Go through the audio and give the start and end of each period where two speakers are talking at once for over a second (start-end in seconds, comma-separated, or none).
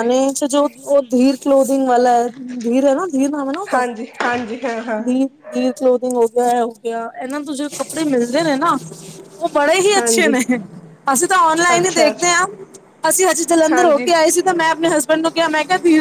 none